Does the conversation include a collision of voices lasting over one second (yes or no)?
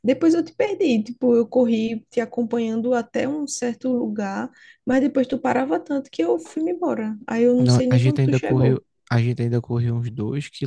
yes